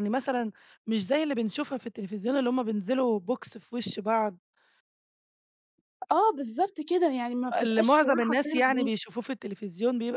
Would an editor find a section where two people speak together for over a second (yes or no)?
yes